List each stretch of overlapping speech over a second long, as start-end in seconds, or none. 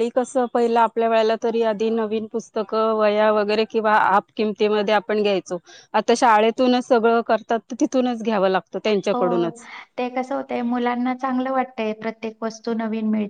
none